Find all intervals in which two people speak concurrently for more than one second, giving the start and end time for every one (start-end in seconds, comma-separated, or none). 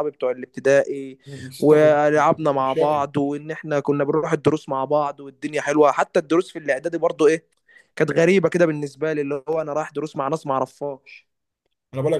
1.6-3.1